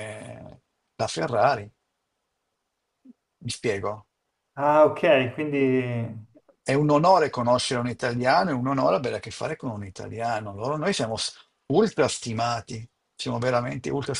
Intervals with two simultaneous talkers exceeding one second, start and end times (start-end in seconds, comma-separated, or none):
none